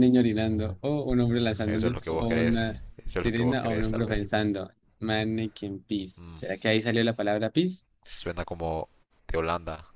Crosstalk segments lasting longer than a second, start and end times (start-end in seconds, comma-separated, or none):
1.7-4.3